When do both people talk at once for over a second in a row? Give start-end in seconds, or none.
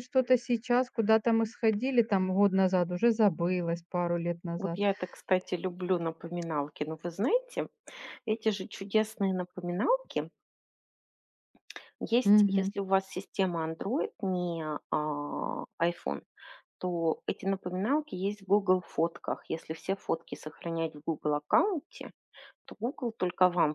none